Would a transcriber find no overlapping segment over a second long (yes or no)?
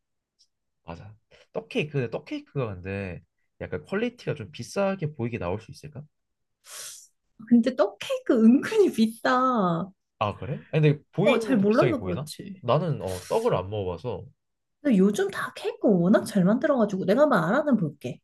no